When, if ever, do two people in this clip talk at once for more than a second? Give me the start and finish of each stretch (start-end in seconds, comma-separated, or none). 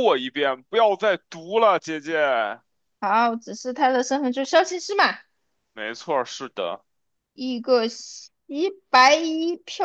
none